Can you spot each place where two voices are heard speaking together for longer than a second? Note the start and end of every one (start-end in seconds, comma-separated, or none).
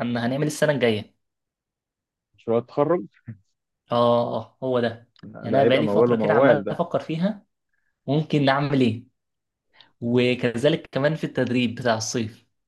5.5-6.8